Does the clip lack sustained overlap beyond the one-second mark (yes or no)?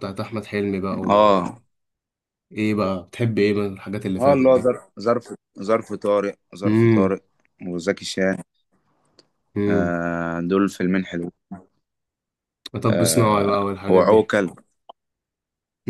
no